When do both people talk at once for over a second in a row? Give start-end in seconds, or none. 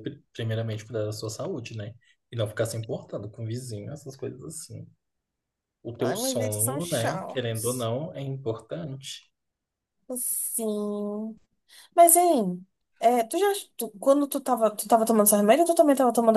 6.0-7.9